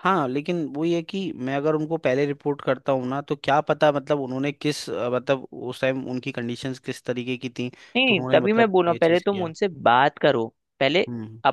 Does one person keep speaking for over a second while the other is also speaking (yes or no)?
yes